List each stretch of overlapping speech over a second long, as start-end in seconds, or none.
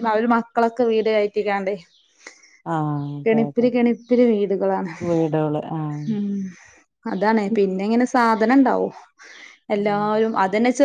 none